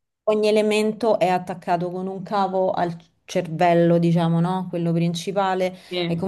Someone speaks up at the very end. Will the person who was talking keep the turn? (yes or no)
yes